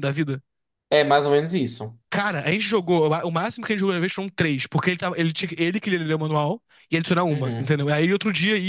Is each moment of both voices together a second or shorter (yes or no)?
yes